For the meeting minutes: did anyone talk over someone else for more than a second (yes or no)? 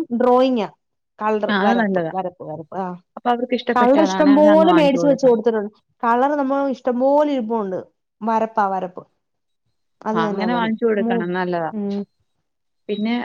yes